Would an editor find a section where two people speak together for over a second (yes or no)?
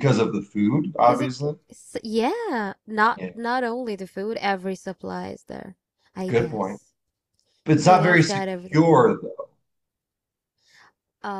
yes